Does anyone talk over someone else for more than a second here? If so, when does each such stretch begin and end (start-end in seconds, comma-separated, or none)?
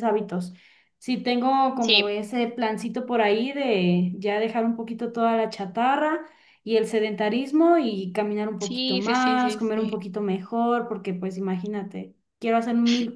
8.6-10.0